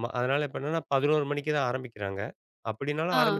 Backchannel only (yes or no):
yes